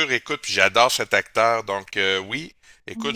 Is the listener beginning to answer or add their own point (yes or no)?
no